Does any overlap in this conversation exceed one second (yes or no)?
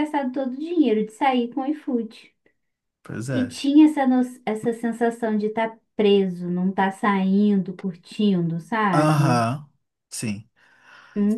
no